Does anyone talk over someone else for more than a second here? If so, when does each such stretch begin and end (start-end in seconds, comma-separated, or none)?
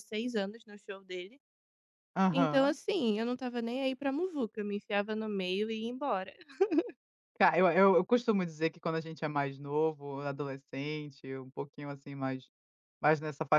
none